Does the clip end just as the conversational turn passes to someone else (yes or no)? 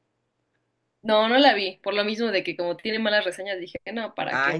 yes